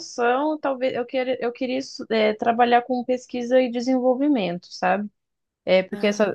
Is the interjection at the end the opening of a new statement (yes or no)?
no